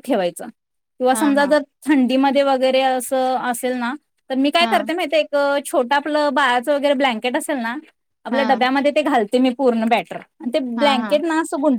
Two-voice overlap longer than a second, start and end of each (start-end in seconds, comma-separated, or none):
none